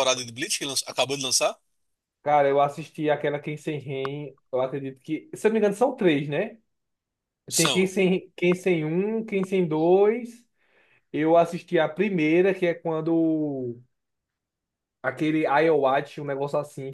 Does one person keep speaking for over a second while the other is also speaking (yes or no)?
no